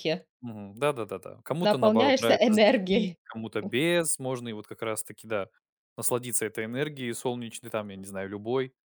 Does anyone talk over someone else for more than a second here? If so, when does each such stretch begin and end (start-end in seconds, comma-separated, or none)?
1.6-3.2